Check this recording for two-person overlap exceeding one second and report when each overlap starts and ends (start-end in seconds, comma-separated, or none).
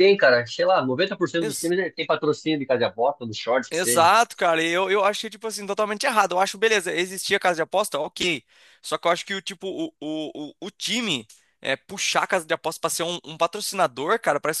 none